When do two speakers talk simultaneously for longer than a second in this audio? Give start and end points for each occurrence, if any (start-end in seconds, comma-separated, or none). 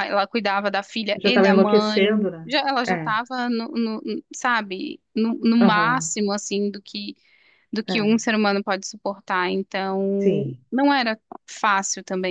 1.1-3.2